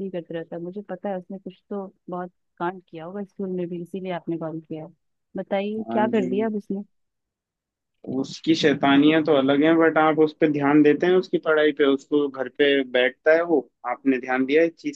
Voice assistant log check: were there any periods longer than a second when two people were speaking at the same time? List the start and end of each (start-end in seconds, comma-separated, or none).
none